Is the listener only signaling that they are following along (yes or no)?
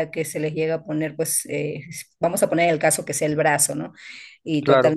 yes